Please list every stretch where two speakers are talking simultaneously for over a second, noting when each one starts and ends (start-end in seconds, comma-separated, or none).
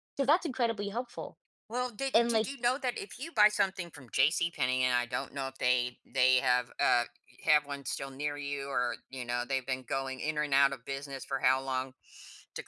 none